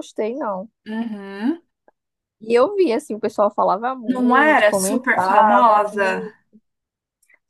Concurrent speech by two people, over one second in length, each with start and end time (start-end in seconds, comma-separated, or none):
4.1-6.3